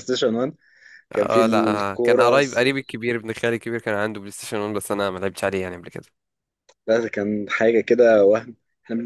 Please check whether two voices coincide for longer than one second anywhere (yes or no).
yes